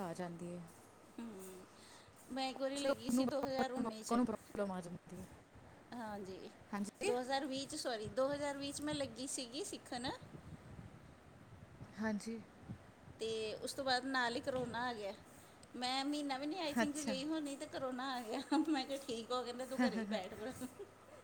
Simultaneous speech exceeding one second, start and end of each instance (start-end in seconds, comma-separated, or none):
2.8-4.1